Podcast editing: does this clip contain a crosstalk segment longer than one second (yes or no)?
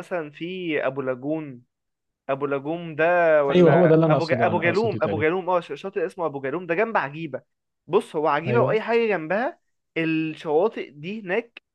yes